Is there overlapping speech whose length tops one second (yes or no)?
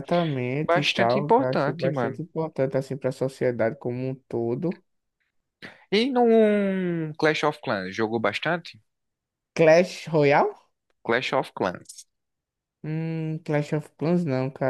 yes